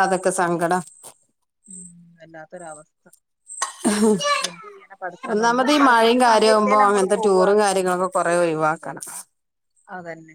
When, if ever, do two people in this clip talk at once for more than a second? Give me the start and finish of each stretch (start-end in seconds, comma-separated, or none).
5.5-7.5